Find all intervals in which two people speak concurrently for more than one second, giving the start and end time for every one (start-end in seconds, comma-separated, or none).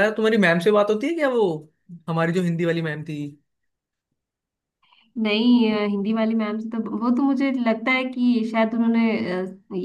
none